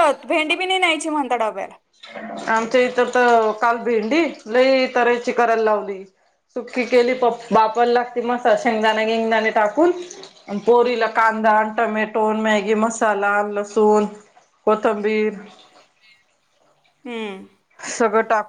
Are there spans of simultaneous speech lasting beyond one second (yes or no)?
no